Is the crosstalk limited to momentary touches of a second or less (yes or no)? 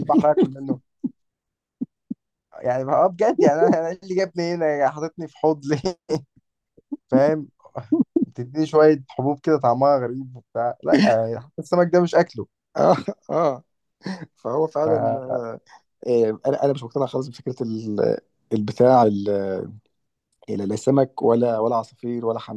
yes